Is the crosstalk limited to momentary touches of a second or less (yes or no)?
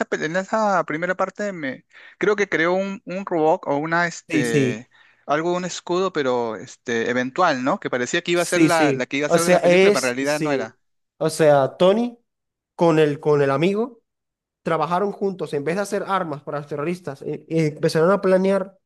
no